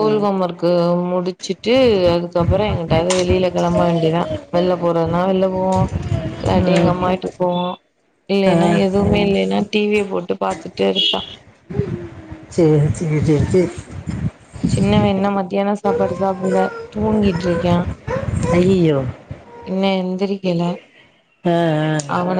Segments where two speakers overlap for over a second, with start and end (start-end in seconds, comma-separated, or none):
none